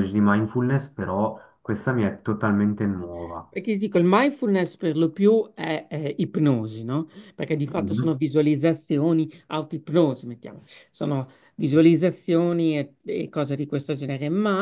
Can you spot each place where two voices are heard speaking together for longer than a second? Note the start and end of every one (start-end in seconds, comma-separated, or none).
none